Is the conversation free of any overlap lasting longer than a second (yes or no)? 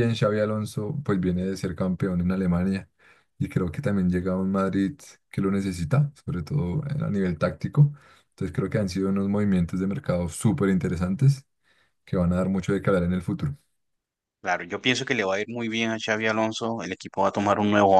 yes